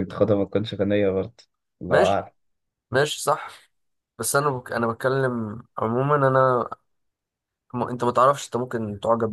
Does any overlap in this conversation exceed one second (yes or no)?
no